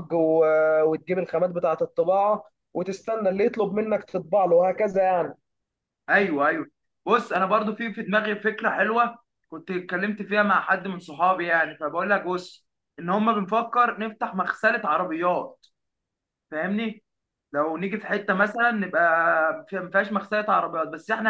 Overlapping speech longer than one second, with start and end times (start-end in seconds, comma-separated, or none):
none